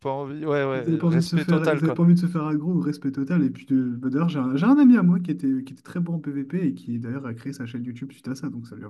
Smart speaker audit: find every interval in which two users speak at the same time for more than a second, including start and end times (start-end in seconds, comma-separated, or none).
0.7-2.0